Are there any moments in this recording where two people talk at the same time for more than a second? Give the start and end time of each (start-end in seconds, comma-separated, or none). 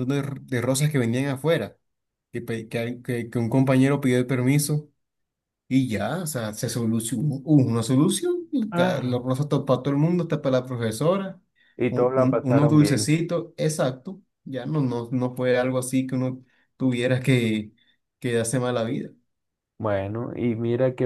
11.9-13.1